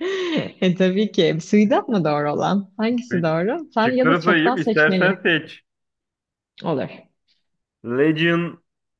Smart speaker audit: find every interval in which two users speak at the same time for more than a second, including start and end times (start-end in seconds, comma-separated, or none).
3.8-5.2